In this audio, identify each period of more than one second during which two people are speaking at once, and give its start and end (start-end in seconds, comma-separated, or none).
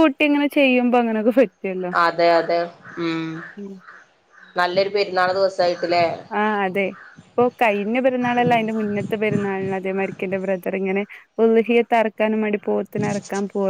none